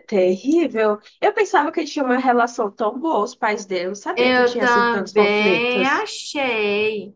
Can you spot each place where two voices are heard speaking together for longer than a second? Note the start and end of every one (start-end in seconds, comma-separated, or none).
4.1-6.1